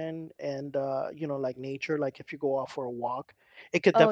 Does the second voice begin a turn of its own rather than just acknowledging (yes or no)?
no